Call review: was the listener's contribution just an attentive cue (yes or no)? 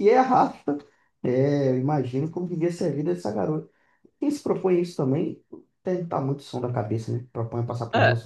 no